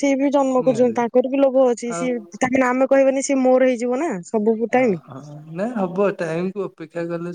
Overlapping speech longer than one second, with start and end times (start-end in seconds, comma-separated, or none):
none